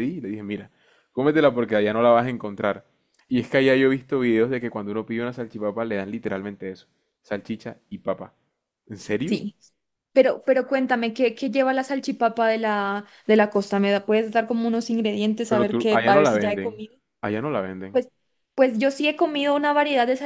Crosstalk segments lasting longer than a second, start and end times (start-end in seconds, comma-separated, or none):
15.5-16.8